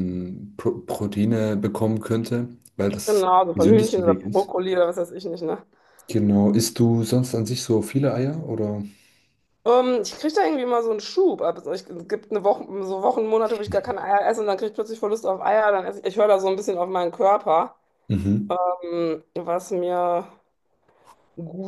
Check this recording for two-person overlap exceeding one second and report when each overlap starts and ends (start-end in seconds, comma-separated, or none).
3.0-4.5